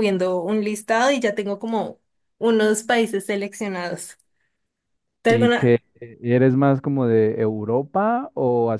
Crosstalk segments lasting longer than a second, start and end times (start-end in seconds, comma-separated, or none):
none